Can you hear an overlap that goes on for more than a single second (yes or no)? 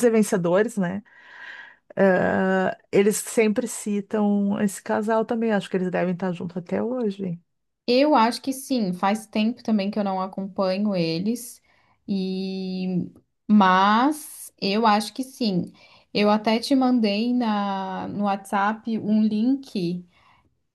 no